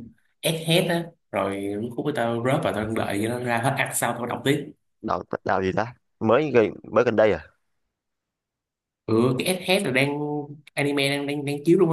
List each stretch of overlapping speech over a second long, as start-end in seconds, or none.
none